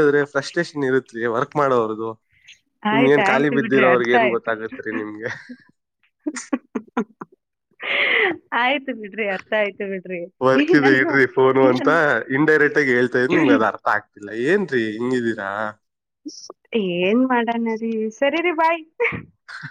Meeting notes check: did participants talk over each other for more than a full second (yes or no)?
yes